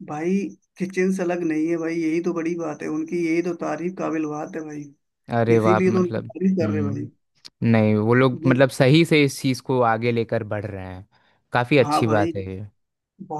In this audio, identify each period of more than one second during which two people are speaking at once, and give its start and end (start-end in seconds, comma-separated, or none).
5.5-7.0